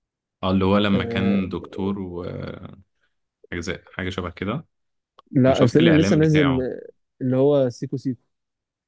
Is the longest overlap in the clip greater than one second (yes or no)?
yes